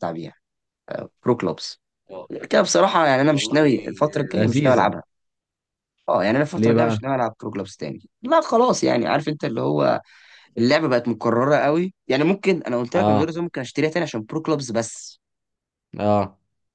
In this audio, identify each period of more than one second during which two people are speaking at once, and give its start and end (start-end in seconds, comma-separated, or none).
none